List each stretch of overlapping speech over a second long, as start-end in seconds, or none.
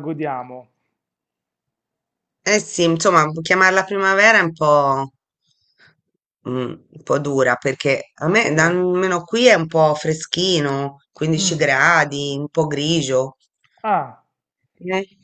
none